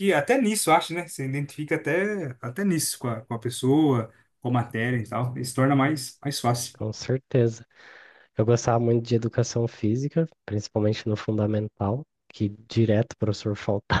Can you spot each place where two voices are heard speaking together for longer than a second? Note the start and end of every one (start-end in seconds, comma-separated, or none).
none